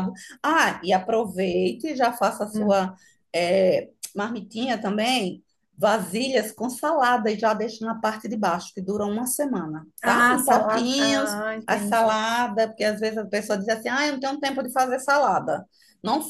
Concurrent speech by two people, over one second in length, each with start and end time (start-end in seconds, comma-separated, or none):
10.0-12.2